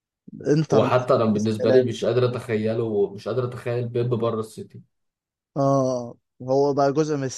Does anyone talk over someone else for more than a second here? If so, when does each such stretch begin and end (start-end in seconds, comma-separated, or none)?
0.7-1.9